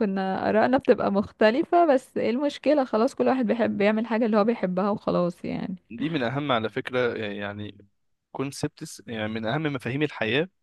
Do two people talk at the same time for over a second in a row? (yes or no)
no